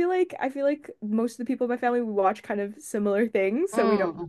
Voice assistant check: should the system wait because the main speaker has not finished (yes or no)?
yes